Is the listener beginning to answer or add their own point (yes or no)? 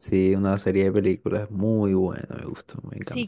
yes